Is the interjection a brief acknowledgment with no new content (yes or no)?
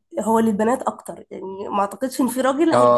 yes